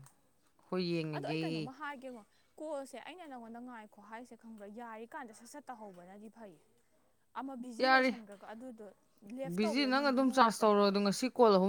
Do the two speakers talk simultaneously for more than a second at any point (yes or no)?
yes